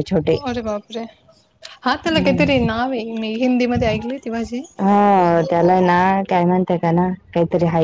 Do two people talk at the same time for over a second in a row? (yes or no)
no